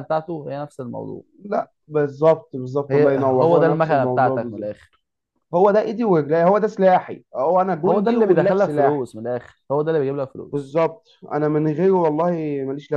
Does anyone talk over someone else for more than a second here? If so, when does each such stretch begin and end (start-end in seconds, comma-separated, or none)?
2.9-4.7, 7.8-9.1